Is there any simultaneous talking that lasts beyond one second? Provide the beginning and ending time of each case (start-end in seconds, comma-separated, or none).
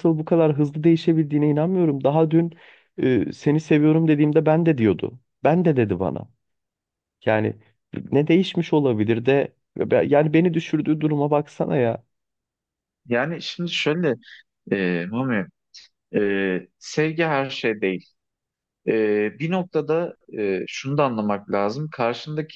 none